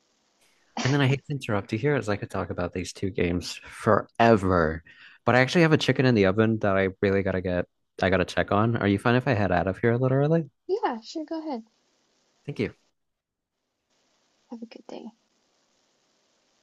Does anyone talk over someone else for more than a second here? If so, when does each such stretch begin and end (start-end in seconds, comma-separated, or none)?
none